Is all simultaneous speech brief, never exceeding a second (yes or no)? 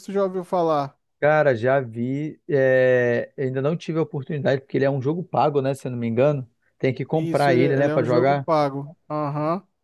no